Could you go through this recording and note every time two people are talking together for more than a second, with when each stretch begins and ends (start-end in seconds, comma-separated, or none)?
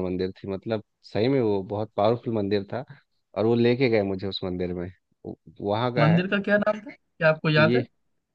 none